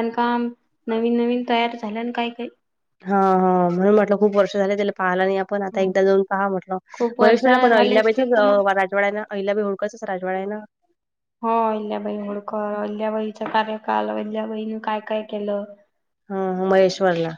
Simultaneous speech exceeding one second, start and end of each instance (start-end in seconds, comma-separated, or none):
7.2-8.6